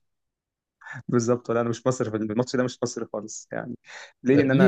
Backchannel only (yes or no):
no